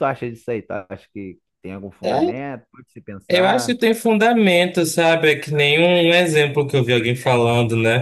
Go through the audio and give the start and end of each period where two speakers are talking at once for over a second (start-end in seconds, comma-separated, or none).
none